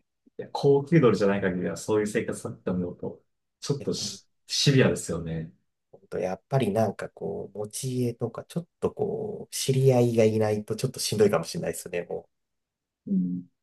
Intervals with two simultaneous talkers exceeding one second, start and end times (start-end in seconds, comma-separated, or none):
none